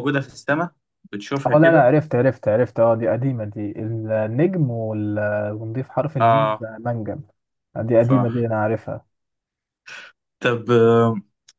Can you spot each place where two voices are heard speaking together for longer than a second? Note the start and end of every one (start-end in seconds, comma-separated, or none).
none